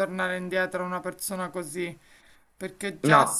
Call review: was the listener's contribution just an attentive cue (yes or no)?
yes